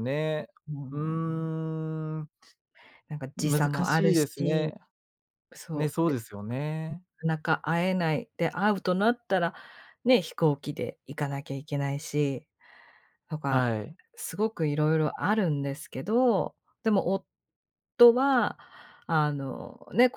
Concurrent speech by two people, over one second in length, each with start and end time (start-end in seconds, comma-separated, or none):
3.4-4.7